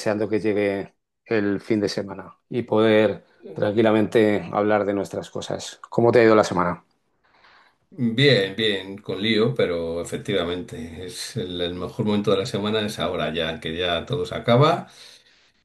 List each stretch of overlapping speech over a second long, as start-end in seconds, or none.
none